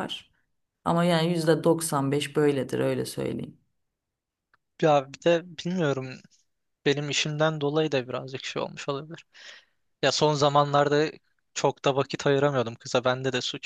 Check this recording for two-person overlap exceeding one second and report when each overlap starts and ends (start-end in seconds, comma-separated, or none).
none